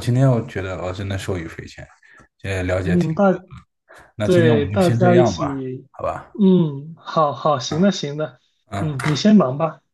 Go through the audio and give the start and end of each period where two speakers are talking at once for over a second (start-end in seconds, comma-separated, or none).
4.2-5.5